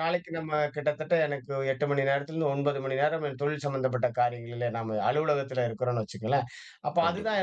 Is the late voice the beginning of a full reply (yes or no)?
no